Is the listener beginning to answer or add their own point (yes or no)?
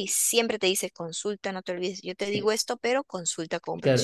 yes